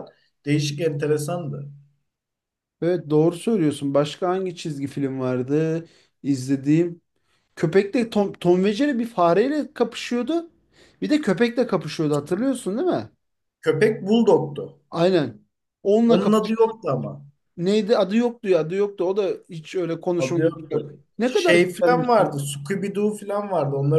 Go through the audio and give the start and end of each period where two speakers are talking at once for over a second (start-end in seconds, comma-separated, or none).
20.2-22.3